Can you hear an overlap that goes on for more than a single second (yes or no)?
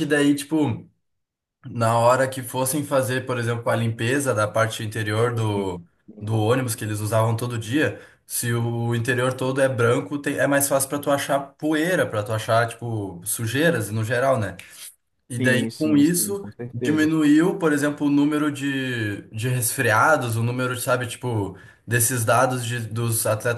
yes